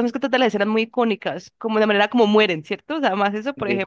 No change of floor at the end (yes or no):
yes